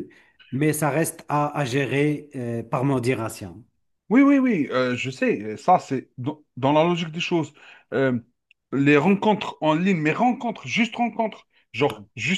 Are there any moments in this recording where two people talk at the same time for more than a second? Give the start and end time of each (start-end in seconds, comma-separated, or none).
none